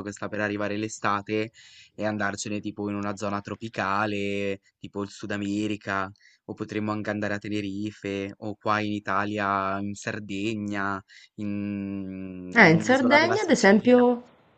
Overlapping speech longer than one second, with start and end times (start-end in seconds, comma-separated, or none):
12.5-14.1